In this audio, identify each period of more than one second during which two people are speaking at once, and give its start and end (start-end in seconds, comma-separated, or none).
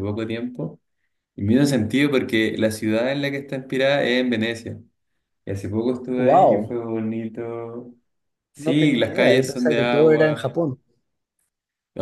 8.6-10.5